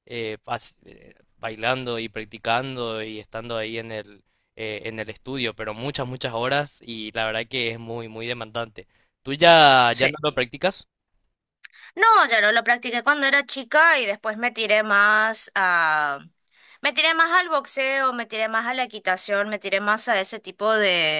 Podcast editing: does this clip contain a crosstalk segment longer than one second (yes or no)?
no